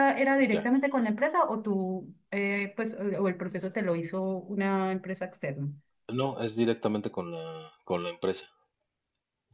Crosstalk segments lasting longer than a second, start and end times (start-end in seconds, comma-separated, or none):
none